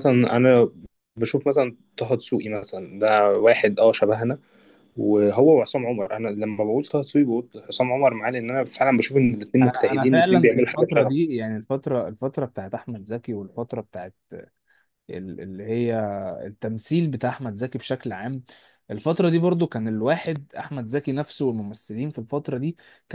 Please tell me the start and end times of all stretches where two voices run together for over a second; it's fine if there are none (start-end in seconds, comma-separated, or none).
9.6-11.2